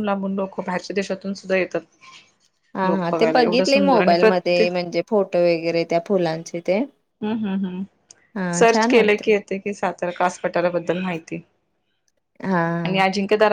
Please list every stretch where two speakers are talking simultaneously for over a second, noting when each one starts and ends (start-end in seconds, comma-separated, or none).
2.9-4.7